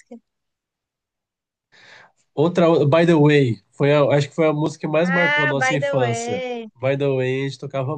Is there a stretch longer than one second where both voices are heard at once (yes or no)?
yes